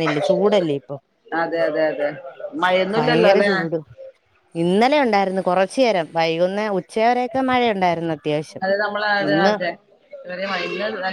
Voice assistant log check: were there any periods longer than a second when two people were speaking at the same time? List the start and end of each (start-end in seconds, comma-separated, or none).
none